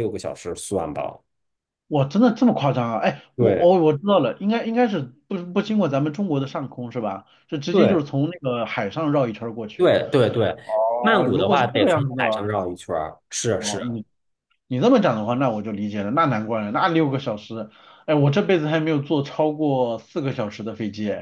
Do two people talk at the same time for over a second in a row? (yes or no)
yes